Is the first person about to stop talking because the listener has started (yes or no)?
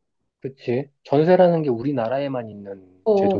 yes